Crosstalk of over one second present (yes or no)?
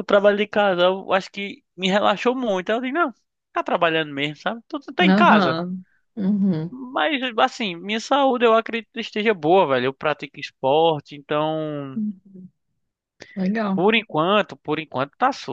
no